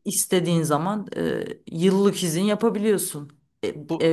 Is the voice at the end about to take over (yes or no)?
no